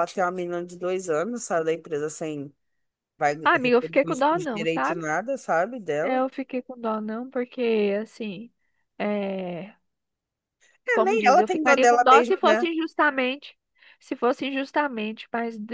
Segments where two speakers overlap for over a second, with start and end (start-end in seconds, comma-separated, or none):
3.4-5.1, 10.9-12.7